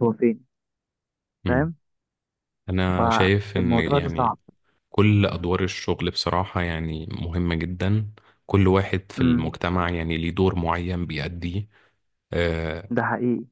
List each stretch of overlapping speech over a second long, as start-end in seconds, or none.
3.0-4.4